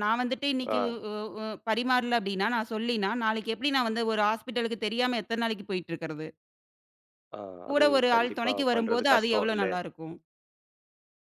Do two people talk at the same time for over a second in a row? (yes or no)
yes